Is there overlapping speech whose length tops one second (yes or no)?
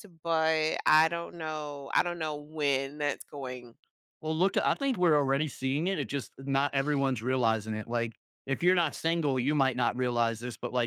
no